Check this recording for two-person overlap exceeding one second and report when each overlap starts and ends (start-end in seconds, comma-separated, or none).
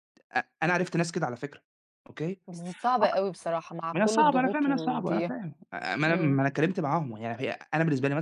3.9-5.3